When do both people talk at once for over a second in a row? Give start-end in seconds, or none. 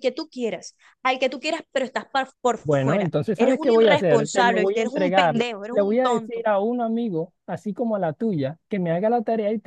2.6-6.5